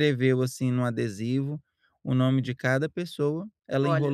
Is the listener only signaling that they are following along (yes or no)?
yes